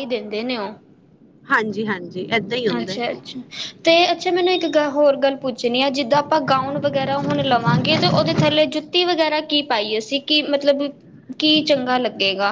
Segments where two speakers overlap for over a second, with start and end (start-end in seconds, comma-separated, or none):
none